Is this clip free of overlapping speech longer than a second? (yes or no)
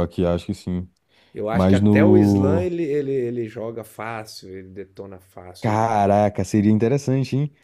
no